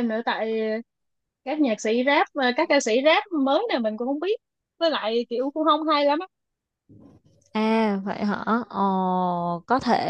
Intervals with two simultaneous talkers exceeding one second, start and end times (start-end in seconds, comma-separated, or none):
none